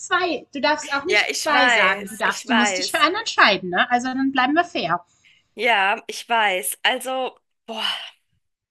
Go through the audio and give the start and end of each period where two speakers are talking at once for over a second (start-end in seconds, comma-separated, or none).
1.1-3.0